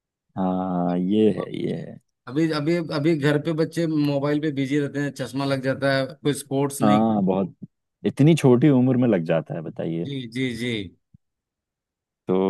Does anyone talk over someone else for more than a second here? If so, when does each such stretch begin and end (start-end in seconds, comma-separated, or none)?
none